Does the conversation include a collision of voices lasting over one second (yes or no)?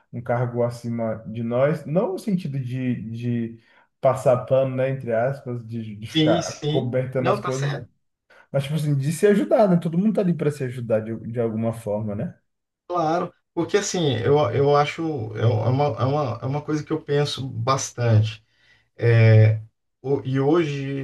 yes